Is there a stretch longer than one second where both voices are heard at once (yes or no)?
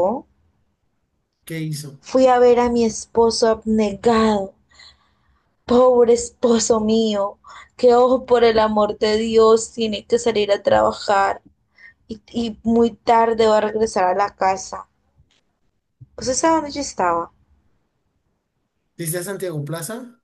no